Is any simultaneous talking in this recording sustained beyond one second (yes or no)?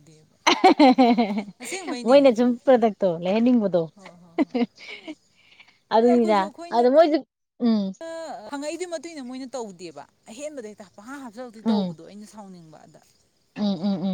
no